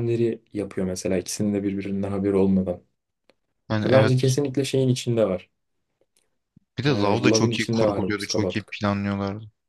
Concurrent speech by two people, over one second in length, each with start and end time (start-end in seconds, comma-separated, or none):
6.9-8.8